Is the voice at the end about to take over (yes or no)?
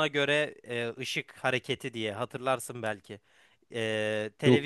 no